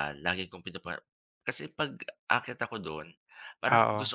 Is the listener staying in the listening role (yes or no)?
yes